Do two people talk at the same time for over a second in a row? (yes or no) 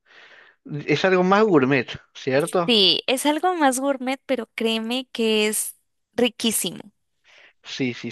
no